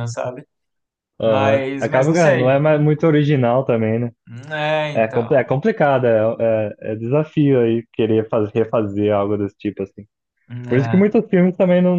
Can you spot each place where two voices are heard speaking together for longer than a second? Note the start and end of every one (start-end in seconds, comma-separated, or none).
1.2-2.5